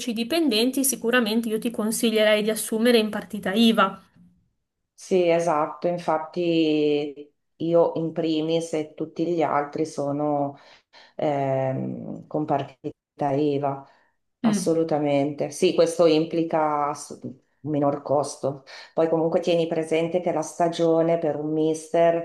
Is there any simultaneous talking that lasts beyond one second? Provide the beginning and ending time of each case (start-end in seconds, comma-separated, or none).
none